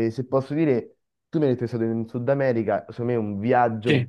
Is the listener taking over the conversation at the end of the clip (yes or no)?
no